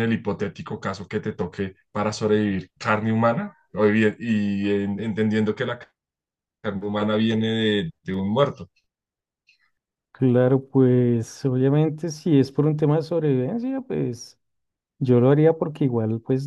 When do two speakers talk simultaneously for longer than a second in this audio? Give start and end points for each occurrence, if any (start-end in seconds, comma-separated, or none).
none